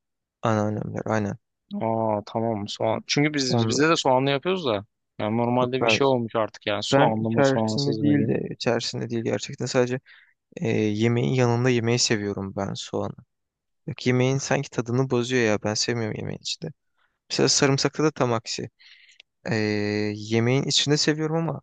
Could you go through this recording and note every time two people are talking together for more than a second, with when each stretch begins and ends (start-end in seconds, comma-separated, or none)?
6.9-8.3